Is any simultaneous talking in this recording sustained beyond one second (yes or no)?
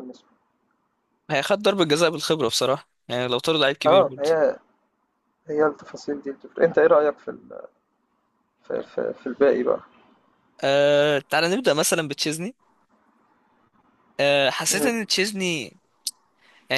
no